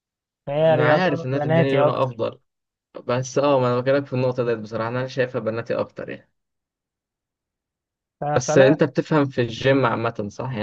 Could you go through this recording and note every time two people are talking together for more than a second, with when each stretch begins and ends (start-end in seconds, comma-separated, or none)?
0.6-2.3